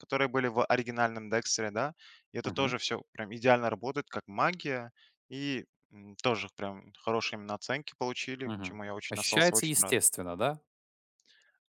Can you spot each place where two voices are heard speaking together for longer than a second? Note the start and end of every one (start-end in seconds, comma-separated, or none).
8.4-10.0